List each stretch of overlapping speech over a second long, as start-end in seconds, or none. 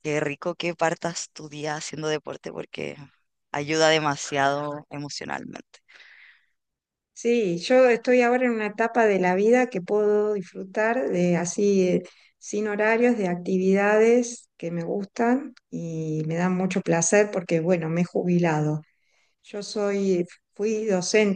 none